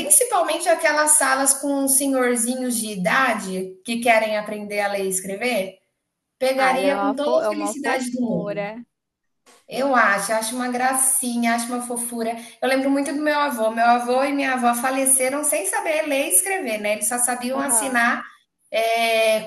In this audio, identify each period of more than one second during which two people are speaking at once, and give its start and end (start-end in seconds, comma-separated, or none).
6.5-8.7